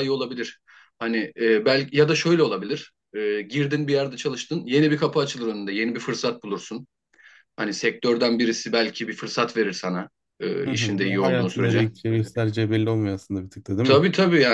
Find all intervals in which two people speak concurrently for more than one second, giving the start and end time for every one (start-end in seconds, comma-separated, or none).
10.7-11.9